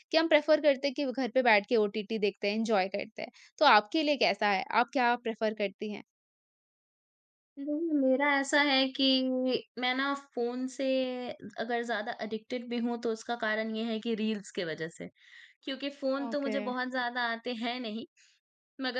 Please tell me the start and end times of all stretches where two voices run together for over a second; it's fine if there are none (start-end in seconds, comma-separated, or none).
none